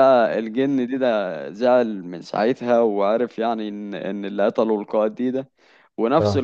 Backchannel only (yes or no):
yes